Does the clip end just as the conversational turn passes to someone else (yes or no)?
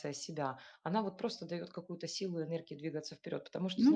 no